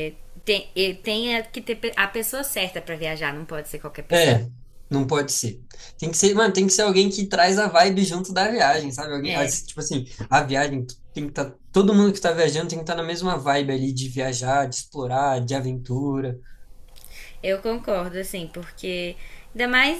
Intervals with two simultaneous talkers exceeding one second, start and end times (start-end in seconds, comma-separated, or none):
none